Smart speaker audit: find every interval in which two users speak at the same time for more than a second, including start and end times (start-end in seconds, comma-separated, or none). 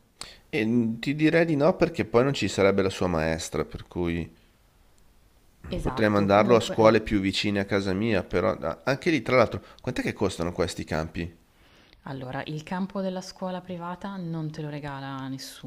5.8-7.1